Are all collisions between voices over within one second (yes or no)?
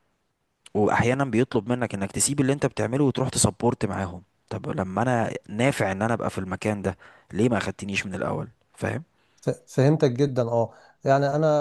yes